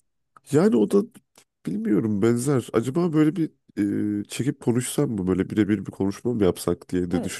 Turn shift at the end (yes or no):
yes